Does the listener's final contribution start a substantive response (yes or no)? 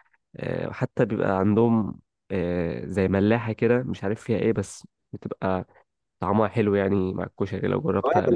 yes